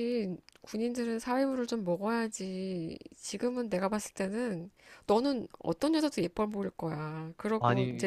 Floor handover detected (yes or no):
no